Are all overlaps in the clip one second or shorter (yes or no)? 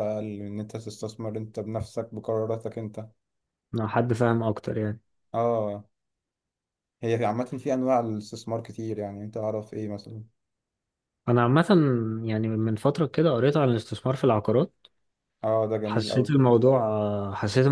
yes